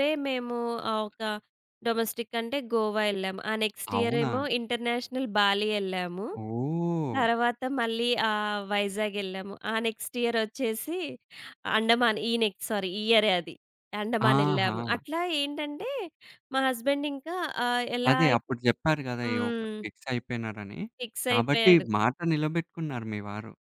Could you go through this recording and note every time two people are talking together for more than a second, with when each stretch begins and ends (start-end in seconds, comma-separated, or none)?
none